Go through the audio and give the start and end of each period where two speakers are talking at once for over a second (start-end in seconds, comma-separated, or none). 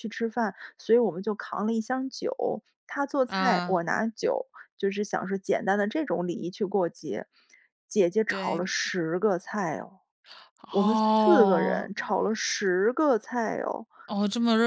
10.7-12.4